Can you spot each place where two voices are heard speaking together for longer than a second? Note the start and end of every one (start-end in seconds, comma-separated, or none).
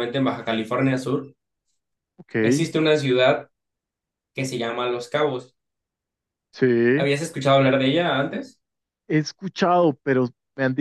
none